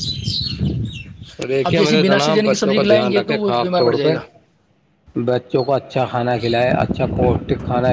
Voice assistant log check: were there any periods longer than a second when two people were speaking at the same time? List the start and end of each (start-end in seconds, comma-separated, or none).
1.6-4.1